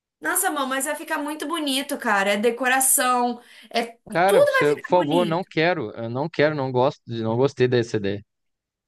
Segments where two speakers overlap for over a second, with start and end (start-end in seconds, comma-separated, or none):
4.2-5.5